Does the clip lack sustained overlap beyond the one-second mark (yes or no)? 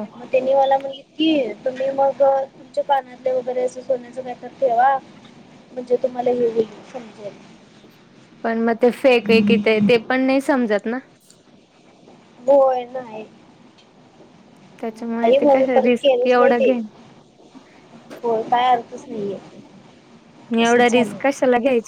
no